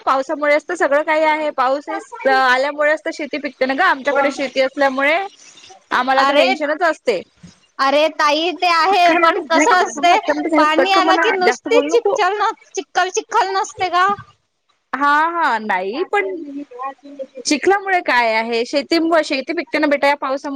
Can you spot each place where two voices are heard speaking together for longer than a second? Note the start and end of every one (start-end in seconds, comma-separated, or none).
8.9-12.2